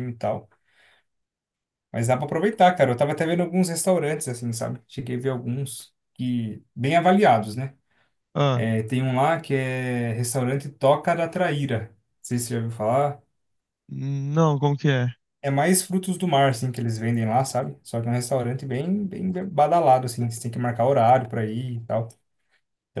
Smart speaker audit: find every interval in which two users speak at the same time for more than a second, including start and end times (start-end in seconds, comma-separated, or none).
none